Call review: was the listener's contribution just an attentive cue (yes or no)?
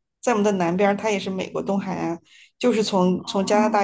yes